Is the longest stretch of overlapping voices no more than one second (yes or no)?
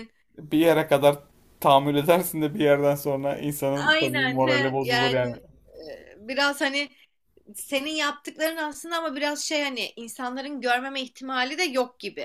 no